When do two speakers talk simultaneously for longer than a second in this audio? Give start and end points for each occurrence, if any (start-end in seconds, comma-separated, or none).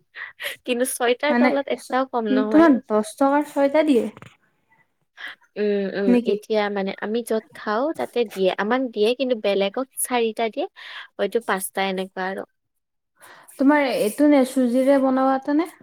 none